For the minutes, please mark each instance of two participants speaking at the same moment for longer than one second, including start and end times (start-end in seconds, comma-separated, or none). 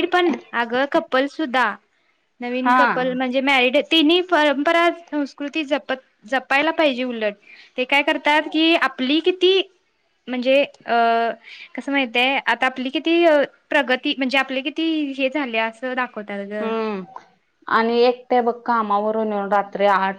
none